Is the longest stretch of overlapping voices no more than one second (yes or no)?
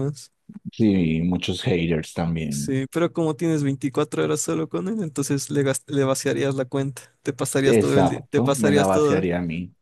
no